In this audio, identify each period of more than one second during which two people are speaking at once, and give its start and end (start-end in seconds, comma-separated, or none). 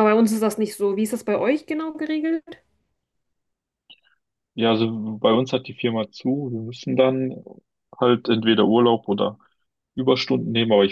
none